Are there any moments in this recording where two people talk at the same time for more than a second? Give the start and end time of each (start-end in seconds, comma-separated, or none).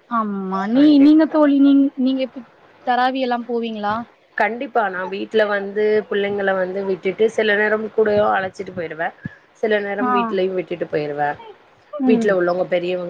none